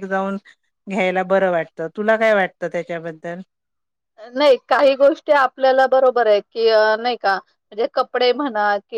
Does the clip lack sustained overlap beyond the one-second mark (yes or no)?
yes